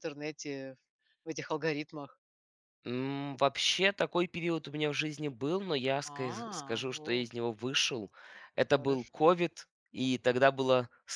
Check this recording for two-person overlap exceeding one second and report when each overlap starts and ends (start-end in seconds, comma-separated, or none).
6.0-7.3